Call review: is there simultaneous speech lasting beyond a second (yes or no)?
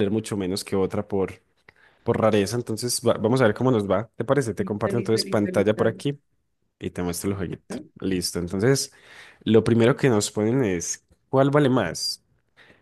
yes